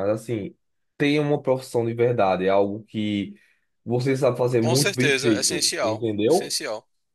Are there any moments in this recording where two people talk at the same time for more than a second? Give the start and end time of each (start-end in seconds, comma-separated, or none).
4.6-6.6